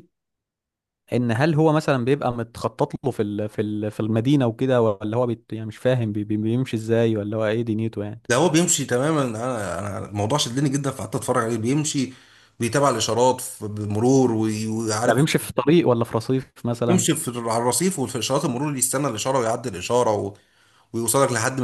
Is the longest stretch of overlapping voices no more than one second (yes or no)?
yes